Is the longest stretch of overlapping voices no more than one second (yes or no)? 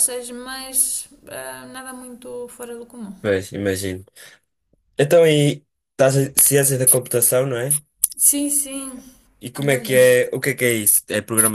yes